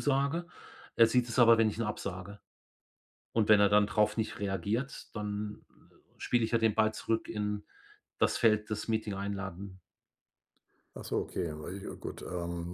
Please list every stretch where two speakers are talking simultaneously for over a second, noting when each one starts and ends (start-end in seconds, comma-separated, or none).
none